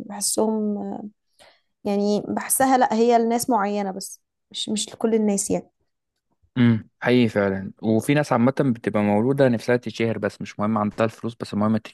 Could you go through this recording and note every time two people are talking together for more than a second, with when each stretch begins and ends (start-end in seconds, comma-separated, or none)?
none